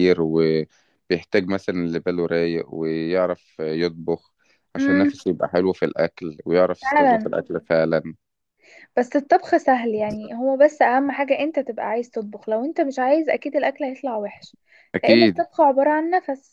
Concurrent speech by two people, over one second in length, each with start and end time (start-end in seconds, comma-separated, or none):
none